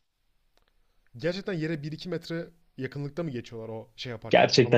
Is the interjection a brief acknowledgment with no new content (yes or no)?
no